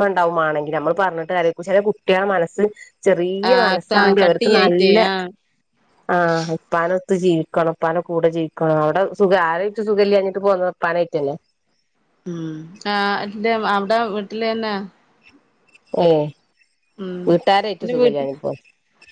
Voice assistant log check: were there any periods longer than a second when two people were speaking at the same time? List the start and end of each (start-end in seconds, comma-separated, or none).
3.5-4.9